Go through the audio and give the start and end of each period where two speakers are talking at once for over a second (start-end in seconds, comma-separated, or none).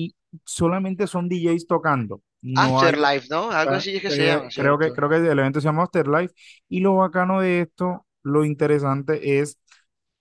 3.6-5.0